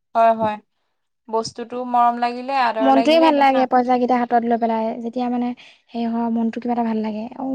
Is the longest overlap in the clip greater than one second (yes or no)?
no